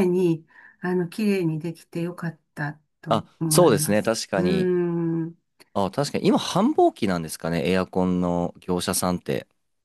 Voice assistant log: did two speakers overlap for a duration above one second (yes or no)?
yes